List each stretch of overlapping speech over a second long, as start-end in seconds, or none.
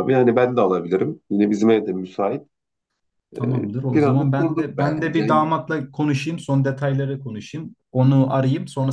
3.4-5.3